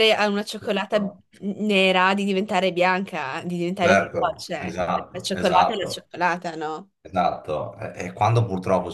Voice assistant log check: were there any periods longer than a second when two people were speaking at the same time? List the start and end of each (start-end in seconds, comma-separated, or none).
3.8-6.1